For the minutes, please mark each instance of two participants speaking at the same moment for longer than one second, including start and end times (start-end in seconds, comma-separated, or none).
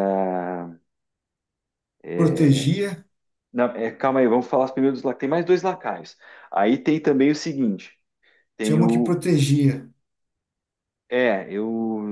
none